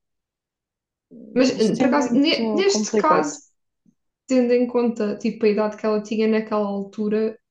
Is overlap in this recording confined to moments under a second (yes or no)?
no